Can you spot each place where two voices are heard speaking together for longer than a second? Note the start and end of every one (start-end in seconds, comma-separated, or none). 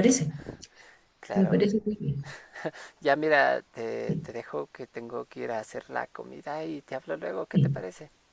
none